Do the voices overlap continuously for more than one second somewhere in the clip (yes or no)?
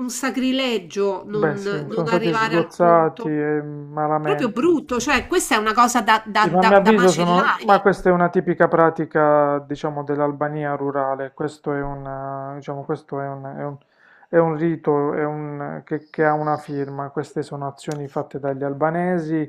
yes